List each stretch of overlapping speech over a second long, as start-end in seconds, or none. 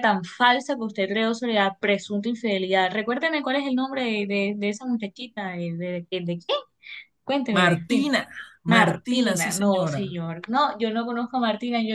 8.7-10.0